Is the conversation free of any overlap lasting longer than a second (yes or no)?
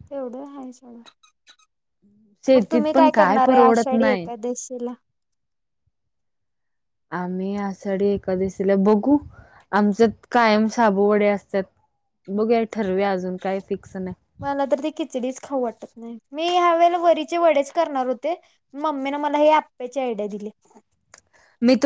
no